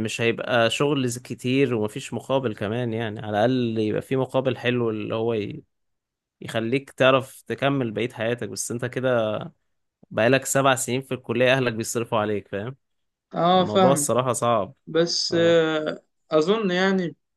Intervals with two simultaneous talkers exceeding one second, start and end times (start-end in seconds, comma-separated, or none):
none